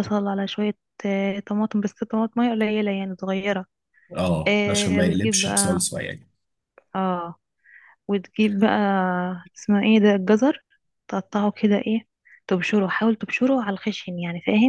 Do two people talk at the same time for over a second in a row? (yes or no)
yes